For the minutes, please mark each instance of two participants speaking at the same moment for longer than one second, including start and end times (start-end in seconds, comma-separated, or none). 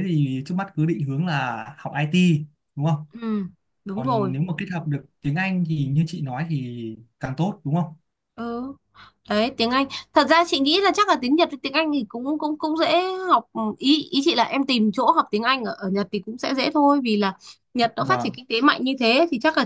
none